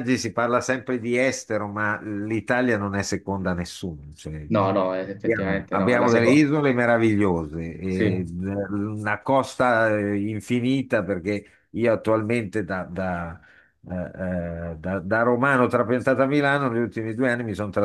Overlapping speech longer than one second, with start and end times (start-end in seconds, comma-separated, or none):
5.2-6.5